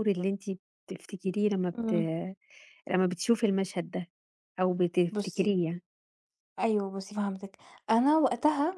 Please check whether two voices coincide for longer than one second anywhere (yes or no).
no